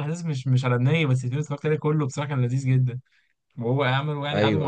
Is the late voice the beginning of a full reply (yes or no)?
no